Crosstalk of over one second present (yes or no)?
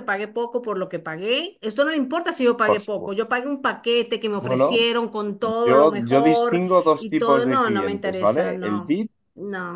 yes